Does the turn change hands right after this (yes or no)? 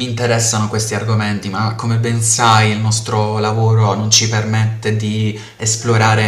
no